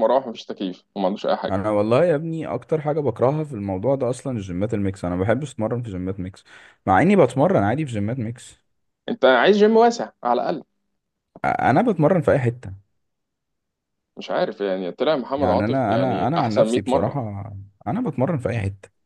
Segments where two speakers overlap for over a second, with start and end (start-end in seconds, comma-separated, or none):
15.4-17.2